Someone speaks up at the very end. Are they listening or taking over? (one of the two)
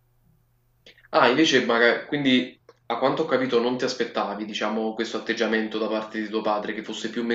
taking over